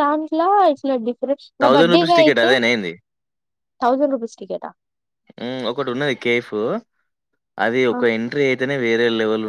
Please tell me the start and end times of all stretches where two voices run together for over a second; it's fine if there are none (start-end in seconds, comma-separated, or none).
none